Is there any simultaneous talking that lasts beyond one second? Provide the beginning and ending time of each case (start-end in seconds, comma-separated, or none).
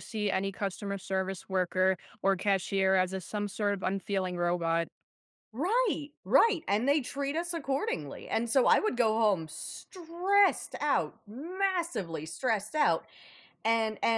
none